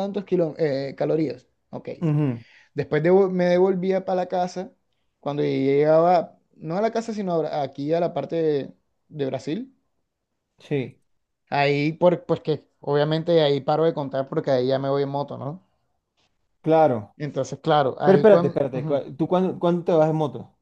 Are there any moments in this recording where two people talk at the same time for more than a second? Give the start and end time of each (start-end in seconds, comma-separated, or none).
none